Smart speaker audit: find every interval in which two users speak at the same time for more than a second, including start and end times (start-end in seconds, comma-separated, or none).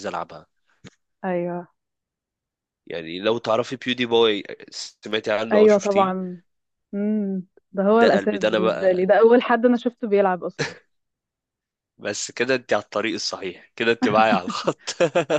7.9-9.3